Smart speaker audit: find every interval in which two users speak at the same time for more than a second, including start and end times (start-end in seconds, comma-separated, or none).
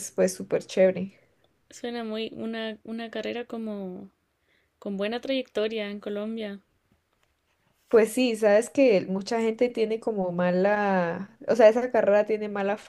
none